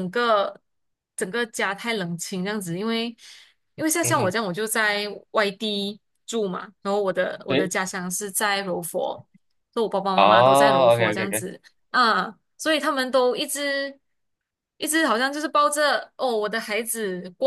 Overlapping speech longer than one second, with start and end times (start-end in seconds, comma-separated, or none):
10.2-11.4